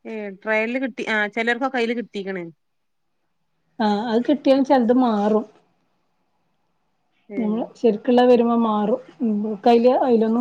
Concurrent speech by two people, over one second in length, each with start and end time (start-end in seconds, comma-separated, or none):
none